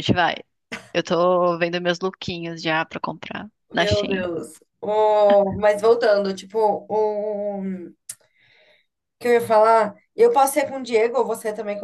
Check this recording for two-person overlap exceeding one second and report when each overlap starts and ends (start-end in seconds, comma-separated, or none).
none